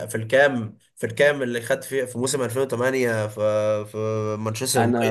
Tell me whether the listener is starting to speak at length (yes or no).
yes